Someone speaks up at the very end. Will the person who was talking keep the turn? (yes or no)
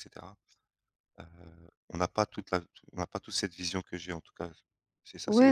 no